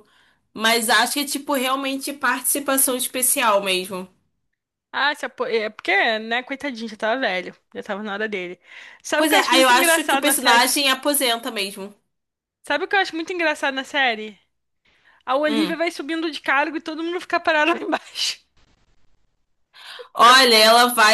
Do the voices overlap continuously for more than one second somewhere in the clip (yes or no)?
yes